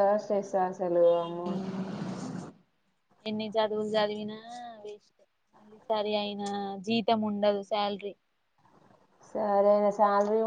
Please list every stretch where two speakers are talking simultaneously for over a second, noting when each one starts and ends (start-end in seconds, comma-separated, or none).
none